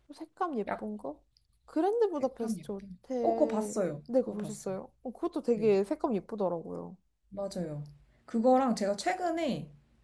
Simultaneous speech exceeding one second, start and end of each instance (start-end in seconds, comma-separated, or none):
2.1-4.8